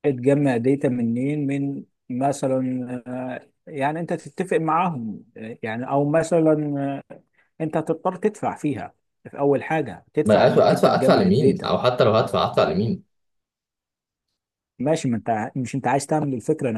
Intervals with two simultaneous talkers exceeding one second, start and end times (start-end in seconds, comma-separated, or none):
10.2-11.7